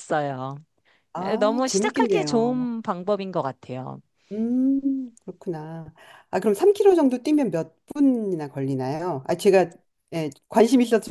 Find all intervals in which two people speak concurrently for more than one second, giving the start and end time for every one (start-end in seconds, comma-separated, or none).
1.2-2.7